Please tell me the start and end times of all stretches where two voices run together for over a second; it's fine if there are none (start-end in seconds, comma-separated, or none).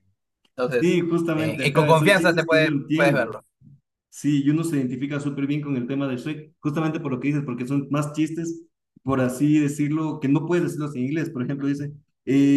0.7-3.2